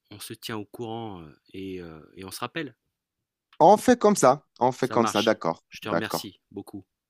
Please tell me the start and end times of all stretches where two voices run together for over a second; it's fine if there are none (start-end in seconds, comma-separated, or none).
4.8-6.3